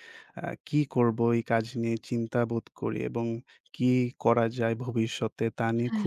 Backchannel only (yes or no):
yes